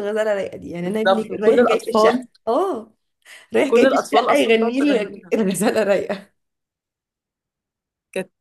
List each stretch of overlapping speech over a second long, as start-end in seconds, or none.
0.8-2.3, 3.7-5.3